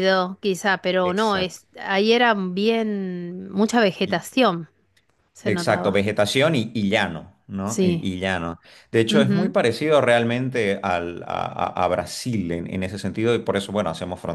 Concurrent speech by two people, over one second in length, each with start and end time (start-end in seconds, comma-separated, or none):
none